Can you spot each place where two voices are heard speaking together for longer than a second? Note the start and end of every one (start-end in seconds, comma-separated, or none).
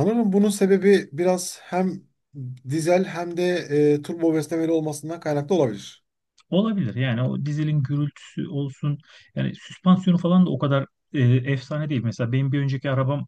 none